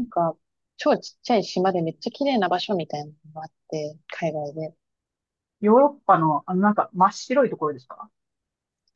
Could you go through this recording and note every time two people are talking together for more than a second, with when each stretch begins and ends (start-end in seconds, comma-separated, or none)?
none